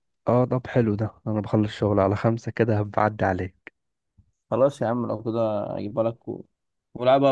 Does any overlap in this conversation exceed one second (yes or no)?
no